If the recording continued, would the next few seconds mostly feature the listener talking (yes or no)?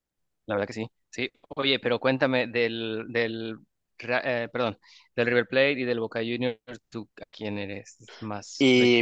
yes